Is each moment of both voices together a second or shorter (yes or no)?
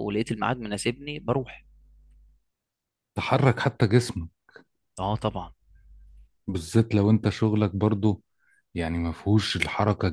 yes